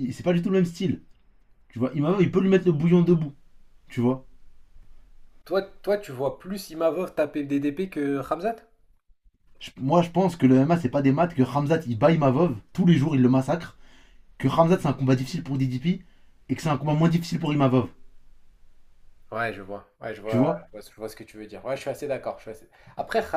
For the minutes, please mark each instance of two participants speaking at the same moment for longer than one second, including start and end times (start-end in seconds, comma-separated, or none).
none